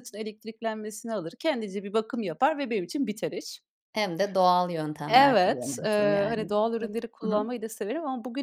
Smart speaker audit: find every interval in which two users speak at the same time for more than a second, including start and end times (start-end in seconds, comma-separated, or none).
5.1-7.5